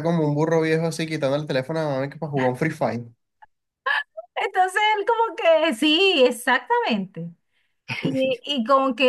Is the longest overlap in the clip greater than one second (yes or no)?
no